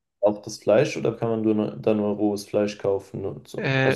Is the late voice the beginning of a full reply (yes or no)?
yes